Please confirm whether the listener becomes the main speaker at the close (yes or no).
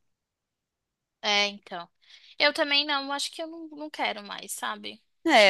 yes